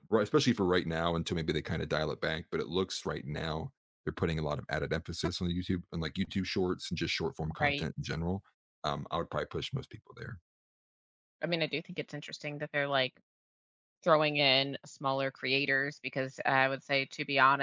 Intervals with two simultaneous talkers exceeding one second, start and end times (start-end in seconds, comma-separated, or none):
none